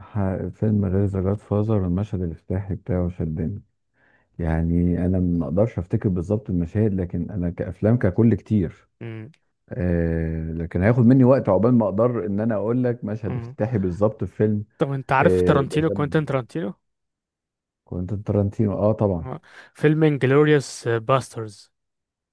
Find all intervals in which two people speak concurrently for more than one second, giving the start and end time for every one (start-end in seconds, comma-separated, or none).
15.2-16.4